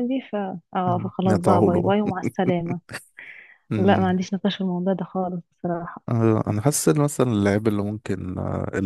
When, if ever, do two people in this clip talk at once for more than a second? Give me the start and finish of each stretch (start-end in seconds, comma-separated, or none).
0.8-2.2